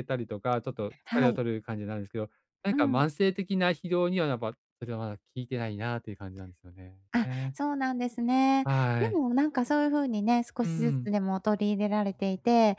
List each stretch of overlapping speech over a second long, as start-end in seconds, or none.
none